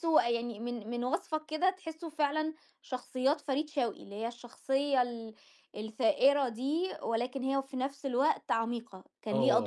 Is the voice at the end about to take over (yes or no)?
yes